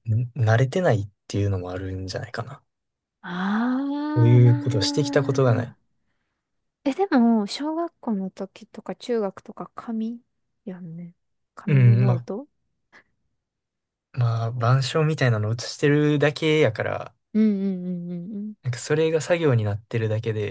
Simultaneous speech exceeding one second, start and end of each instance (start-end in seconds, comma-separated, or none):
4.1-5.8